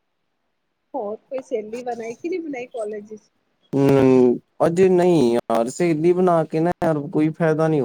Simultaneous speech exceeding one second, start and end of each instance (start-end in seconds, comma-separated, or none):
none